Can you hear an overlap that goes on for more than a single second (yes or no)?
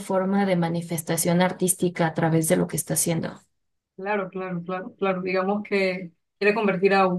no